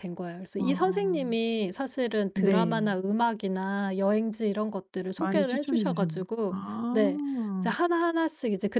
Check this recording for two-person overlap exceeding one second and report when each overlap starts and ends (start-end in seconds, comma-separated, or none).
5.2-6.9